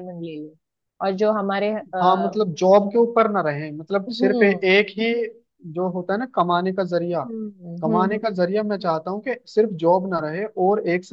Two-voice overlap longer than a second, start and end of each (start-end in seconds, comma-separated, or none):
none